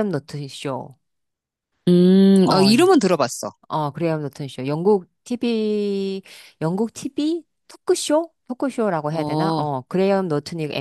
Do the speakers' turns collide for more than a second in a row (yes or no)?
no